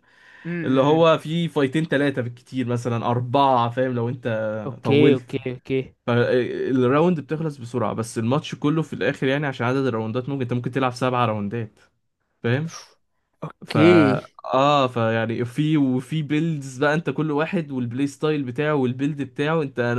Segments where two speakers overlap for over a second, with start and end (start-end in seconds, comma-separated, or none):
none